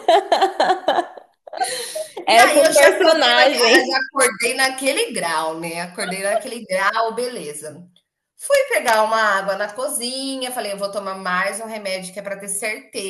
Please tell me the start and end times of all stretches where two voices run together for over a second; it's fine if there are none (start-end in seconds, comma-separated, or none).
2.3-4.0